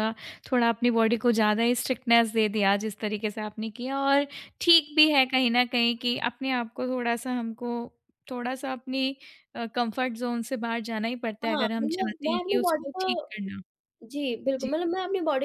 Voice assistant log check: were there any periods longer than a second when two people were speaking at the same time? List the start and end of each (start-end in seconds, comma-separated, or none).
11.4-13.5